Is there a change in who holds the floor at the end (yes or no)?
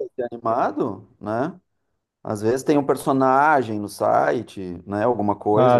yes